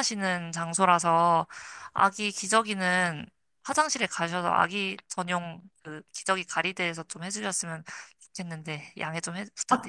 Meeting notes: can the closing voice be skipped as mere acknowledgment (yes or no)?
no